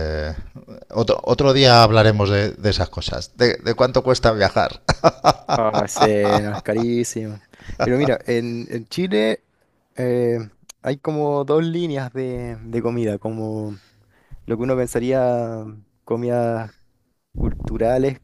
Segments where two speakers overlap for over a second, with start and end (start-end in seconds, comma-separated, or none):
none